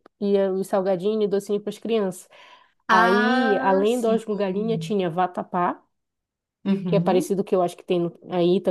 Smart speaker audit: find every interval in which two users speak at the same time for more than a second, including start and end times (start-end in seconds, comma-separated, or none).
2.9-4.2